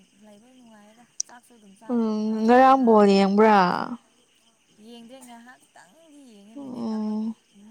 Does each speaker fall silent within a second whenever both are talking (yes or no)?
no